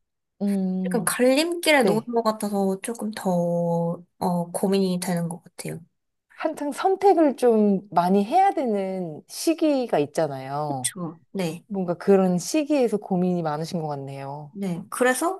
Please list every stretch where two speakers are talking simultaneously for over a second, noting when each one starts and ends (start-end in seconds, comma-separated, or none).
none